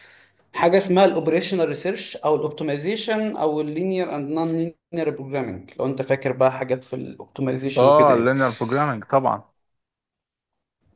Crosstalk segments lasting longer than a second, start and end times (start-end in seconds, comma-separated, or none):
none